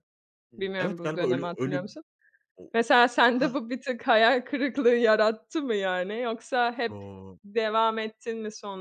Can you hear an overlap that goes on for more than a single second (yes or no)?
yes